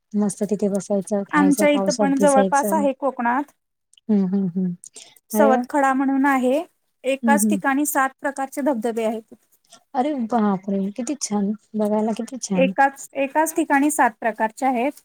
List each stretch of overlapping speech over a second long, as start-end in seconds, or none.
1.4-2.9